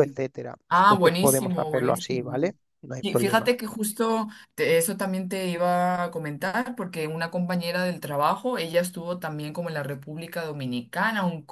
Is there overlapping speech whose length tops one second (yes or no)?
yes